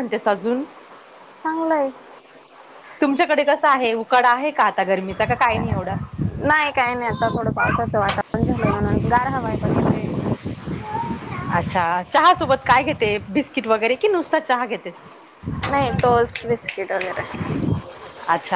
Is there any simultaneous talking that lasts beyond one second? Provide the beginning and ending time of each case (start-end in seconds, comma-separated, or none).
none